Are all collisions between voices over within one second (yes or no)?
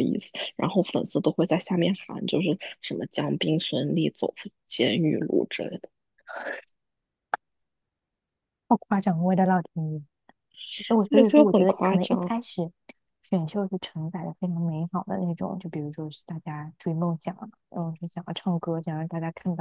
no